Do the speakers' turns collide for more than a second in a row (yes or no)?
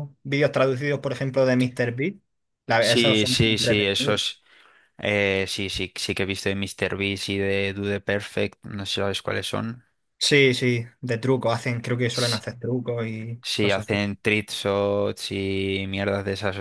yes